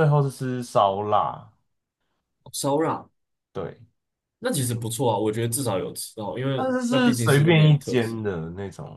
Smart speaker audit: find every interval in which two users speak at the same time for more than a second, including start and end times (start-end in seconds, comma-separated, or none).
6.5-8.2